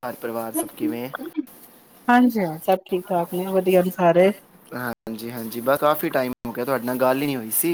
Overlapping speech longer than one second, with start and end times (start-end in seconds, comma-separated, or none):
none